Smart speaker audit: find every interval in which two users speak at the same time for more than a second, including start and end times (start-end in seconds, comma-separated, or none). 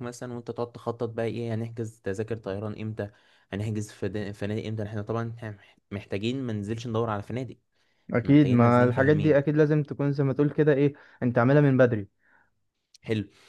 8.2-9.4